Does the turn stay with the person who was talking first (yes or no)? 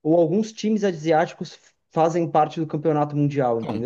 no